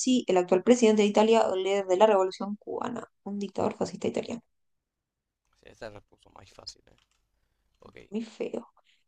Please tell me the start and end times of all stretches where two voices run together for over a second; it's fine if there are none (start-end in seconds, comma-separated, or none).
none